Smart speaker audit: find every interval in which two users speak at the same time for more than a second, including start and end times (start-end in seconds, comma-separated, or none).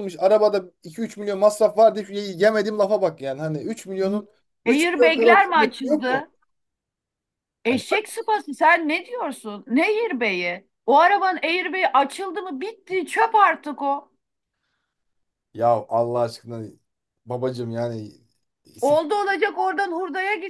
4.7-6.2